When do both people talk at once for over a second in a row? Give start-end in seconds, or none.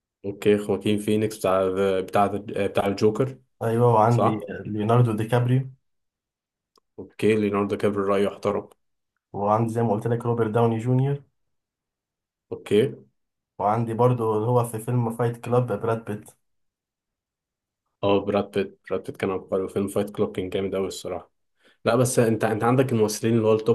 none